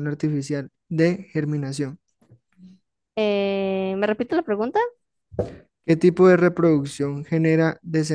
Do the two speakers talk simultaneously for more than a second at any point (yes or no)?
no